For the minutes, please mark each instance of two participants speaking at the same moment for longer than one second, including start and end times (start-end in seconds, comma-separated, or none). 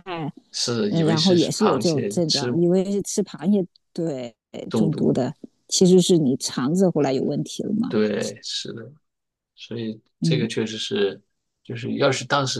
0.9-2.5